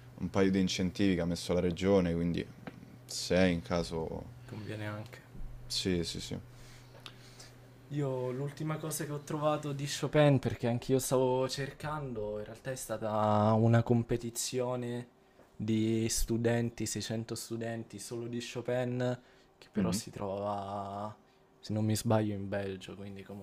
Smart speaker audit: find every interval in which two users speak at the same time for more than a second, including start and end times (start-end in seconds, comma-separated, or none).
none